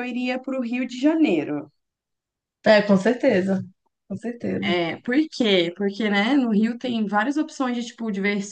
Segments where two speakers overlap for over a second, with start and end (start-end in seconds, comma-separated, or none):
none